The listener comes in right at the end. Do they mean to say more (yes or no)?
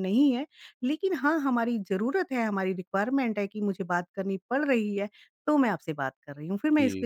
yes